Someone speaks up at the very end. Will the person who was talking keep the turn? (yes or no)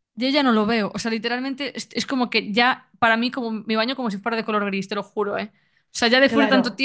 no